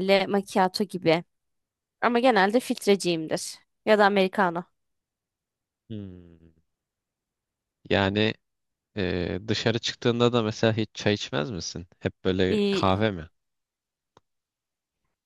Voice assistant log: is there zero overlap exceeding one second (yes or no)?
yes